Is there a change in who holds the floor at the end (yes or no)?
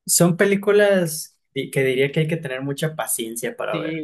yes